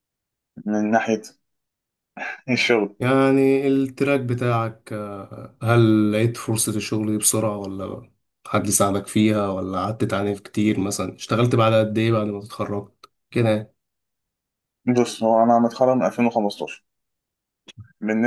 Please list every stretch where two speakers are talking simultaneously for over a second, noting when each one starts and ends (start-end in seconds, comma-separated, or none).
none